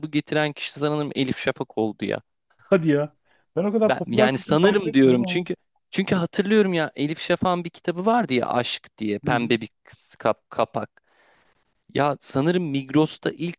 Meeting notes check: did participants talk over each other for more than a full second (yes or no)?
yes